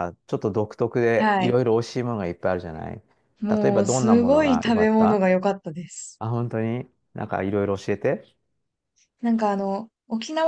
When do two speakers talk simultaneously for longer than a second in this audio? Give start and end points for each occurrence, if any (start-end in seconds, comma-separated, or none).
3.5-5.3